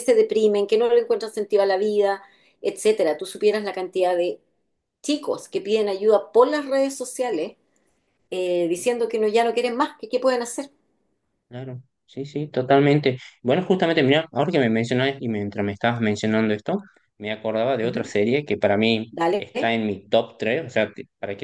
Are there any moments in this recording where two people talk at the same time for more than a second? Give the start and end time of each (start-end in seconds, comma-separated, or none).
none